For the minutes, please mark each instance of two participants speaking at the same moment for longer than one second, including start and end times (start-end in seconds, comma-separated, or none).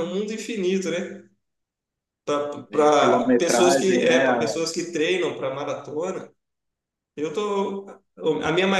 2.7-4.2